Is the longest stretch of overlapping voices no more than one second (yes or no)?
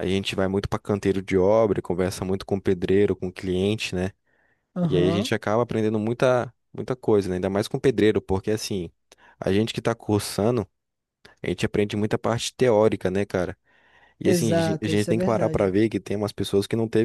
no